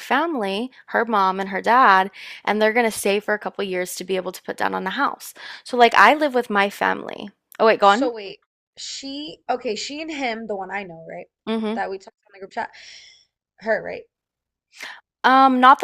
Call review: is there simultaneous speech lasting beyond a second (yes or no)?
no